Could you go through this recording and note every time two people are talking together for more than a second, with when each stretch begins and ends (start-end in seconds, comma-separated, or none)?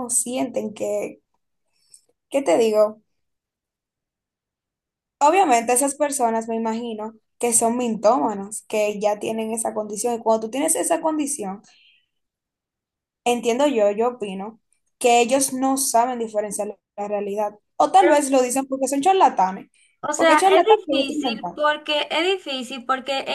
20.1-21.6